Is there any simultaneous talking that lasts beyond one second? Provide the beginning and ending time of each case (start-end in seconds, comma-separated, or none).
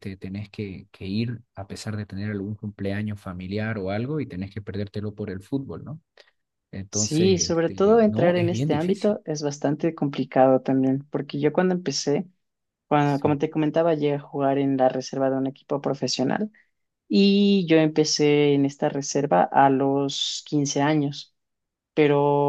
6.9-9.2